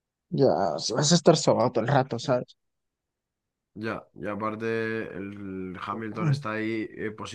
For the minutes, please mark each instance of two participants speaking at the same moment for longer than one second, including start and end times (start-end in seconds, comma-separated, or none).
none